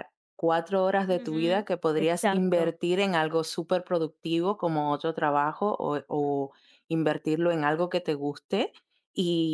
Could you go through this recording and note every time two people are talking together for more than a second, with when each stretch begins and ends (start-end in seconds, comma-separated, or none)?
1.1-2.7